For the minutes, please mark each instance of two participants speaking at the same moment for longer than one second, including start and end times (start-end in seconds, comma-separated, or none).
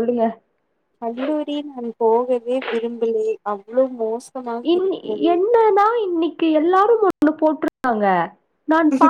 none